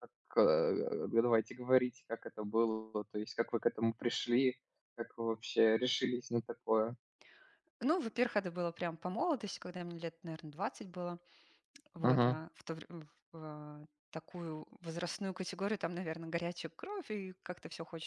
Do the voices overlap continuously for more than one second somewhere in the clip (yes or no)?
no